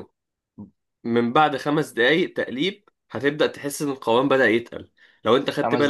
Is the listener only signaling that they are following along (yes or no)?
yes